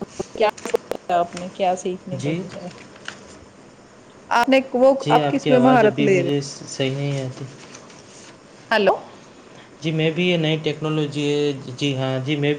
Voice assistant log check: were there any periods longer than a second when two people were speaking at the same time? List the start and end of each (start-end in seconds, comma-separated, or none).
5.0-7.4